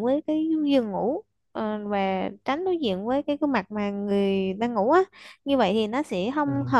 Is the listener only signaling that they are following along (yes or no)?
yes